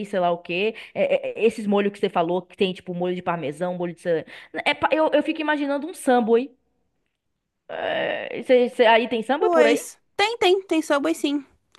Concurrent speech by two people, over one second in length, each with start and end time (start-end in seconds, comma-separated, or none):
none